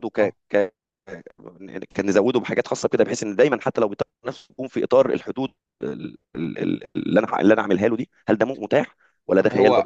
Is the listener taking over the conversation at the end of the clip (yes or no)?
yes